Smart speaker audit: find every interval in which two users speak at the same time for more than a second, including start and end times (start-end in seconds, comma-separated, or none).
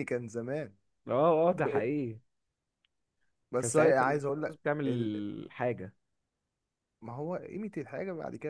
3.6-5.1